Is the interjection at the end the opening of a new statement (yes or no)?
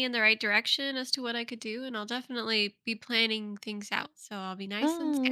yes